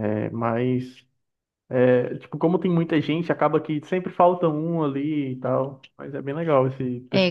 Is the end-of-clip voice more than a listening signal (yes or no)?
yes